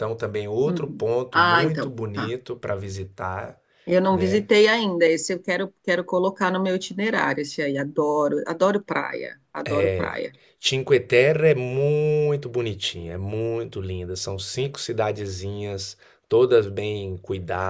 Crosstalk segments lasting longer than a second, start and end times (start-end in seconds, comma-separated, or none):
0.6-2.4